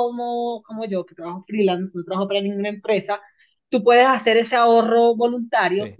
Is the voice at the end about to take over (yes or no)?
no